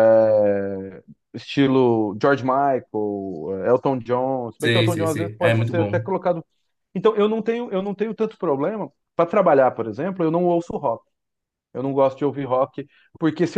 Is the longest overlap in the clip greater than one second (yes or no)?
yes